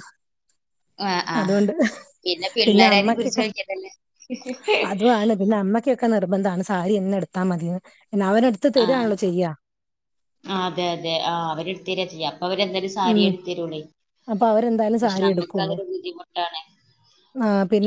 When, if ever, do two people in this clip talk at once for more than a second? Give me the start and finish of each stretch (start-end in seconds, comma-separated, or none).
none